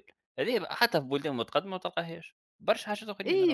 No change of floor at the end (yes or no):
no